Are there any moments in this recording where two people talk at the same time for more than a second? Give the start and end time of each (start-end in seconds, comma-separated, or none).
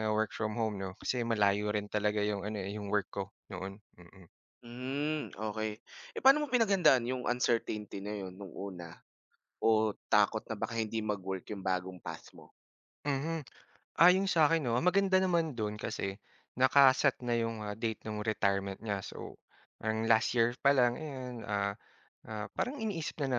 none